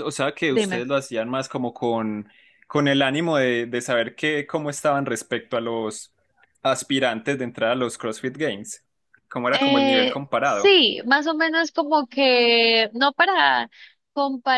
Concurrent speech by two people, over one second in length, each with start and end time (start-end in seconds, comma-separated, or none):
9.5-10.8